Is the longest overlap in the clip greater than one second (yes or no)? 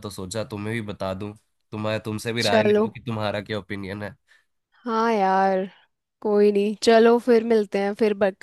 no